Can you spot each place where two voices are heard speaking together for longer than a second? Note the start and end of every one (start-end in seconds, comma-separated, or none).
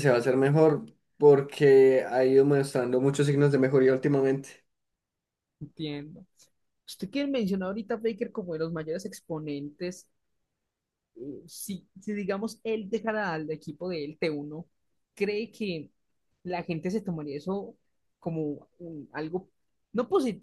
none